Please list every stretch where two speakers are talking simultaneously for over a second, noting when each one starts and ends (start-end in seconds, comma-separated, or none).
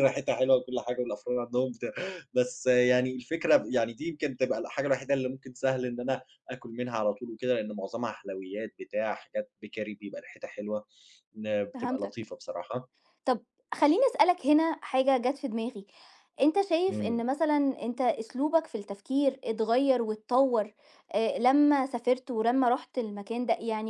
none